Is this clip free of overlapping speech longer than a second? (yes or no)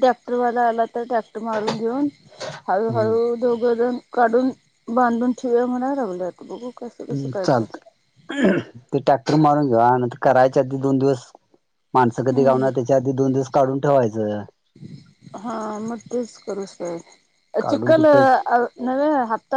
yes